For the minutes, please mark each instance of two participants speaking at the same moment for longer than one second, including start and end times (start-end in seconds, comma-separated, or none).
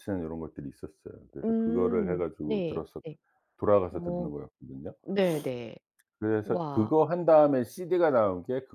1.4-3.0